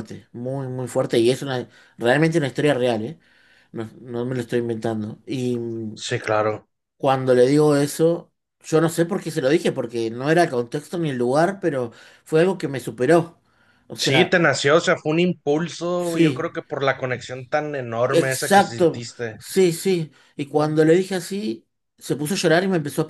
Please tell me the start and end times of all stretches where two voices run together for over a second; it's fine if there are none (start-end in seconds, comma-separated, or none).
18.1-19.4